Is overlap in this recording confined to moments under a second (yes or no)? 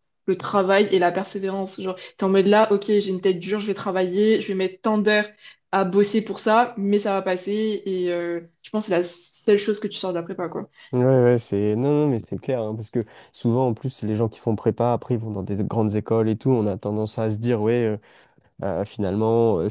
yes